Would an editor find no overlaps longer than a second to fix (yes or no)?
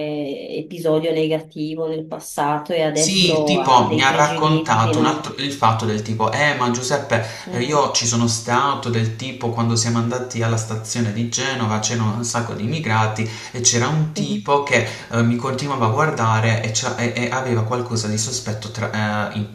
no